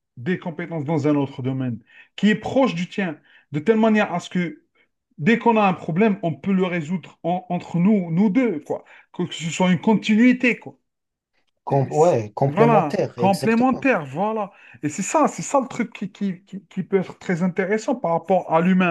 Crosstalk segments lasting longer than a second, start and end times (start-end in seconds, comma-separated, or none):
11.7-13.9